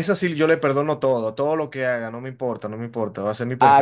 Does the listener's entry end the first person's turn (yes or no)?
no